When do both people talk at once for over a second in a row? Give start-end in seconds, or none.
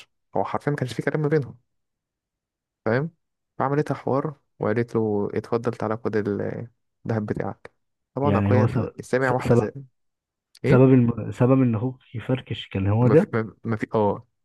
none